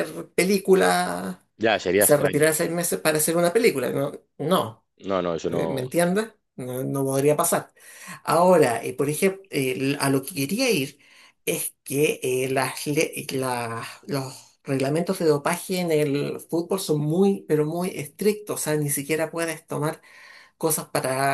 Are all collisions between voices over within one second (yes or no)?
yes